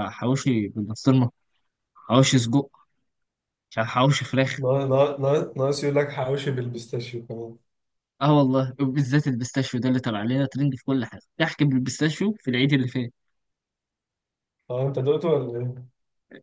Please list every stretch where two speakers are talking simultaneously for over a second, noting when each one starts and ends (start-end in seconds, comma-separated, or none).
none